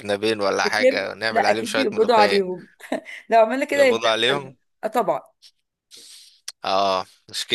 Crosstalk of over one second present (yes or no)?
yes